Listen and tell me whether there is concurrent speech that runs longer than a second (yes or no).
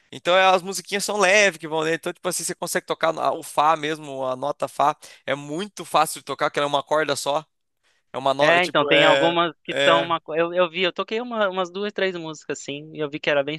yes